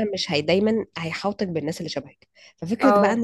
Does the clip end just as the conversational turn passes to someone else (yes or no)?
no